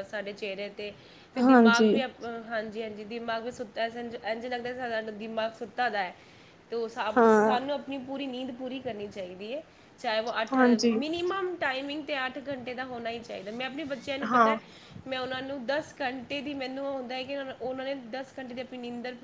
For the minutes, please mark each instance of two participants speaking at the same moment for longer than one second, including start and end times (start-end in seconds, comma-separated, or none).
none